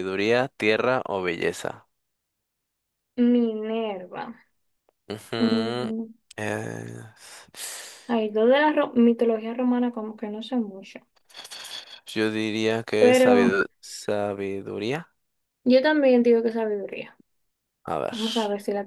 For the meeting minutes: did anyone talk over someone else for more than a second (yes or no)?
no